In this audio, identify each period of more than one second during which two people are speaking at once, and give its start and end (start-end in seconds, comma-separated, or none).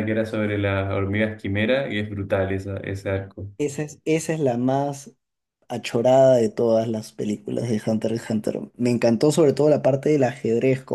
none